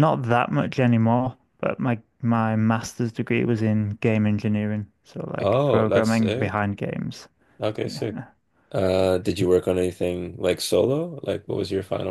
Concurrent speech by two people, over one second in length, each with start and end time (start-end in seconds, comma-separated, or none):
5.4-6.7